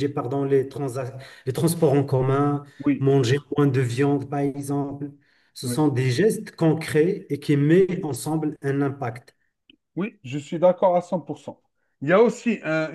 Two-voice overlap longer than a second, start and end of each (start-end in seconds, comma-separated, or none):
none